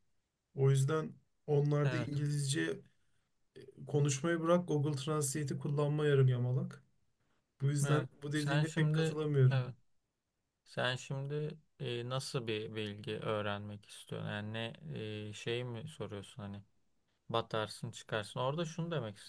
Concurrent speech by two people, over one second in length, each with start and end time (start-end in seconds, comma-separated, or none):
7.8-9.6